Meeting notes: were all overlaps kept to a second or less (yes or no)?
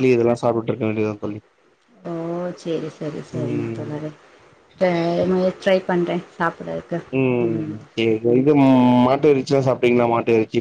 yes